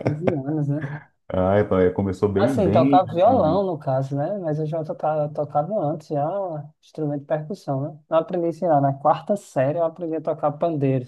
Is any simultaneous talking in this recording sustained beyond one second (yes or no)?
yes